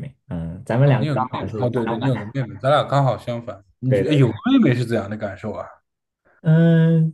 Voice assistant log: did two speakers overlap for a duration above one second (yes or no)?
yes